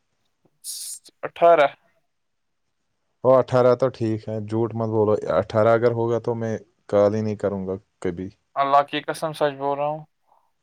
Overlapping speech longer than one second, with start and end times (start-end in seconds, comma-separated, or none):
none